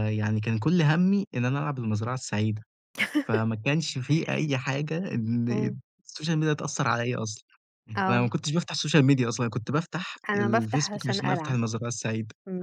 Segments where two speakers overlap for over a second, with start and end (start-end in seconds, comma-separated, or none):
10.3-11.6